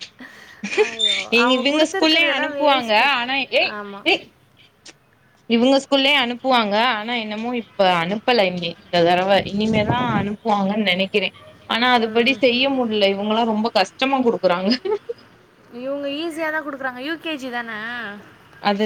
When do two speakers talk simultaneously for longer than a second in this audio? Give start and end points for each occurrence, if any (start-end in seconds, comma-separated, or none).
1.4-3.1